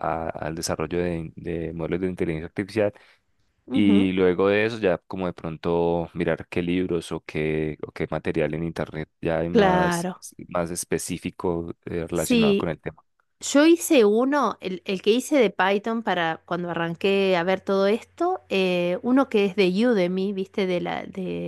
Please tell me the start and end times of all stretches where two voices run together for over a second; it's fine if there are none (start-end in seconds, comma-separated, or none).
none